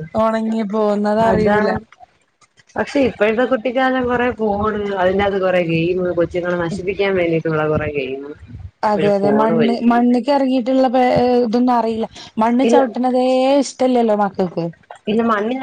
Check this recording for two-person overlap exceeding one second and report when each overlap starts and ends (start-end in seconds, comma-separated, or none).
none